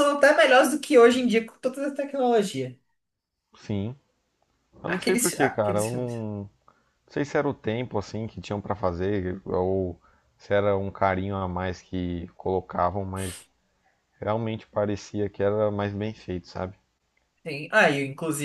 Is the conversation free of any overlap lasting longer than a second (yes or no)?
no